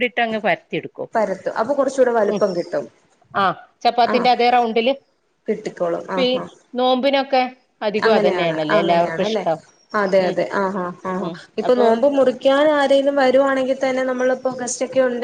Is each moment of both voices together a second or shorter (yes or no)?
no